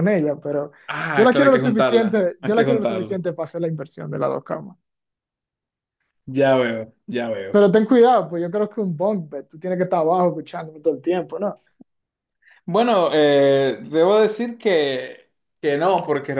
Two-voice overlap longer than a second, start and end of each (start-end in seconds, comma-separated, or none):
1.1-3.2